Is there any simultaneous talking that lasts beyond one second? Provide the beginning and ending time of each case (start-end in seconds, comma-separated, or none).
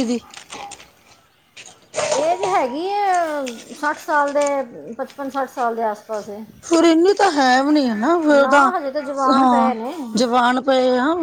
none